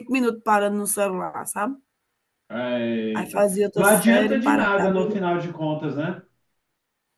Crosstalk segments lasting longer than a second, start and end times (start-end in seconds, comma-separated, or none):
3.1-5.2